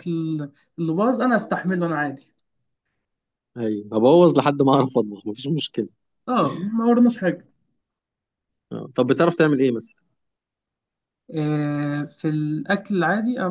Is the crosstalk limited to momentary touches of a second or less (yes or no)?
yes